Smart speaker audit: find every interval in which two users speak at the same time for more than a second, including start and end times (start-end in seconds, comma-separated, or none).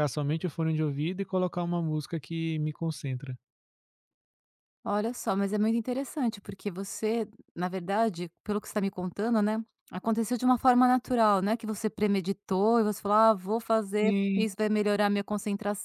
none